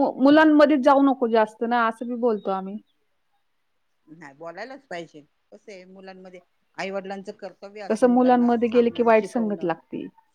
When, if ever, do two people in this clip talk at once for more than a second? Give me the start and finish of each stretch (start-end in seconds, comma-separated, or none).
7.9-9.7